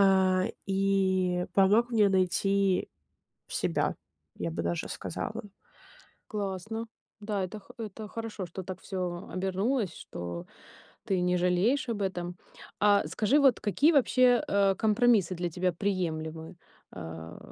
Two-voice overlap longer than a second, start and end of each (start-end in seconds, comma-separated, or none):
none